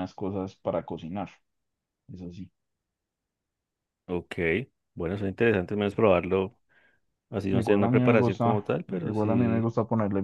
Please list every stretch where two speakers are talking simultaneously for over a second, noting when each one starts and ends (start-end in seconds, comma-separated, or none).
7.5-9.7